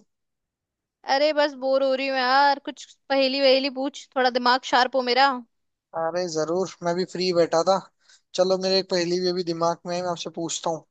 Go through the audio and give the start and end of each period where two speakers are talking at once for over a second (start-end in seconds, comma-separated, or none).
none